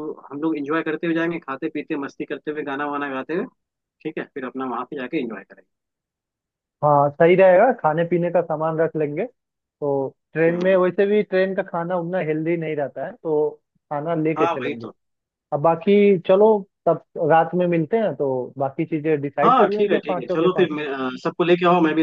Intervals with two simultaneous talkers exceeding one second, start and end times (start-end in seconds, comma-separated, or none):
19.4-20.9